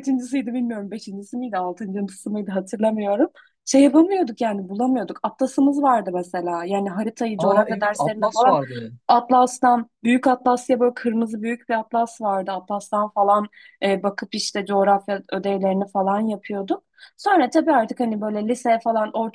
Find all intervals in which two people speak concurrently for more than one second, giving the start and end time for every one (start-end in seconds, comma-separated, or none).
7.4-8.6